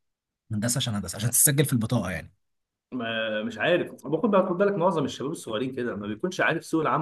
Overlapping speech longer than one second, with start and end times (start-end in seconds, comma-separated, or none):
none